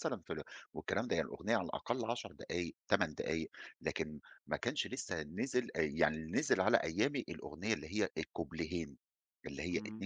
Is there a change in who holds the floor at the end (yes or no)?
no